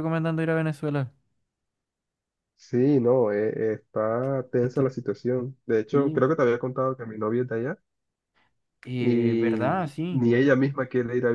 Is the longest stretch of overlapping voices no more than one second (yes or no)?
no